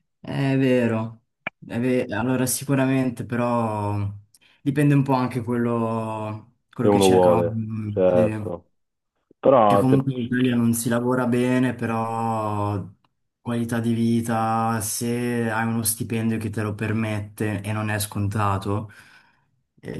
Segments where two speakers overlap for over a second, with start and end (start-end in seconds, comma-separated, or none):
6.8-8.5